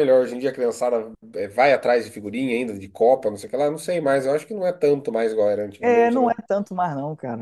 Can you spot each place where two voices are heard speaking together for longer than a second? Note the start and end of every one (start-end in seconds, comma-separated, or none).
none